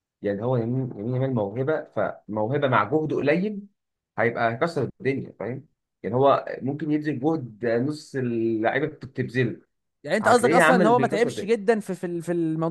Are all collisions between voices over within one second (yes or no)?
no